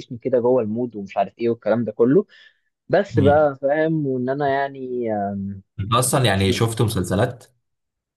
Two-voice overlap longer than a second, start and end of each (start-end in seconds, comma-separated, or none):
none